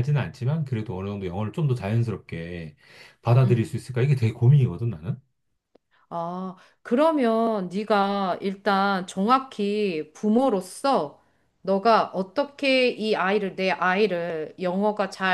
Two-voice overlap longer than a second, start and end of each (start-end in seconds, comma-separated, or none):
none